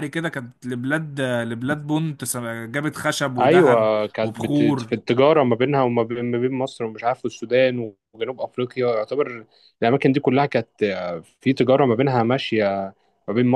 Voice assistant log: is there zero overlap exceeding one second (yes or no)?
no